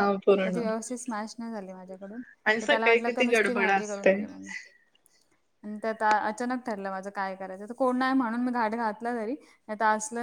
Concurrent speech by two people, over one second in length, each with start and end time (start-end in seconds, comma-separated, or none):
2.5-4.1